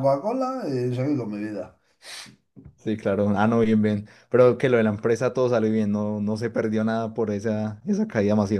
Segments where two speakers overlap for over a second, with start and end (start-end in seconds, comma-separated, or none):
none